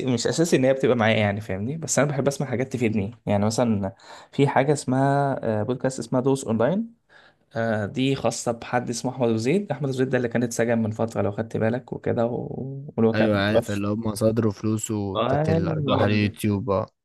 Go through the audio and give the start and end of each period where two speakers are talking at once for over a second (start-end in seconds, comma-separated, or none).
15.2-16.4